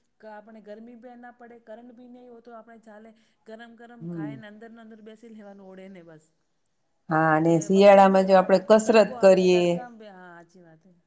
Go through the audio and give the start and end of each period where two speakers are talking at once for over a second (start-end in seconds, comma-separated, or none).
7.5-9.8